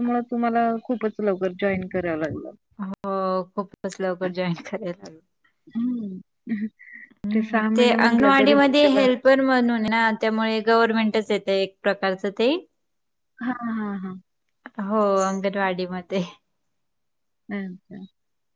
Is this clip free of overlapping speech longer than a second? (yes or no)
no